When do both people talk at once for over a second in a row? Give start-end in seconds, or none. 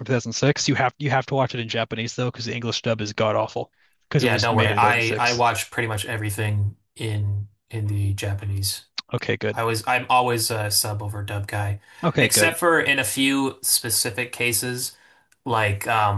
4.2-5.5